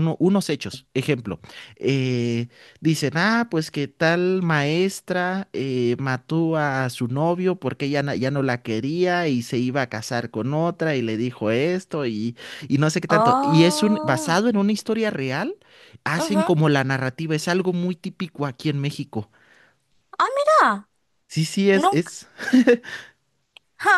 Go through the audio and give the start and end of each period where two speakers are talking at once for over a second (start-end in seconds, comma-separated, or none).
13.1-14.4